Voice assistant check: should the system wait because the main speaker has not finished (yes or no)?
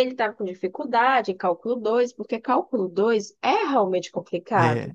no